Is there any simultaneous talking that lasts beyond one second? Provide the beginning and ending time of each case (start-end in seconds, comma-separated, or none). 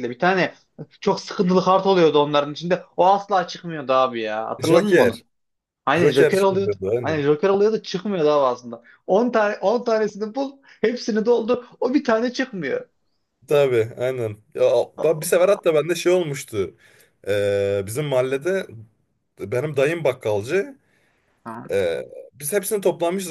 5.9-7.3